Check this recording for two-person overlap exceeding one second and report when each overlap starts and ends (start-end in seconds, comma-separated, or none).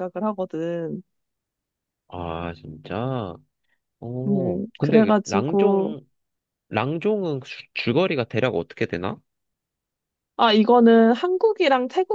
4.3-6.0